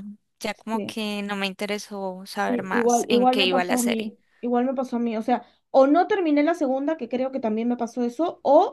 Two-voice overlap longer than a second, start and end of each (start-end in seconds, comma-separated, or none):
2.3-4.1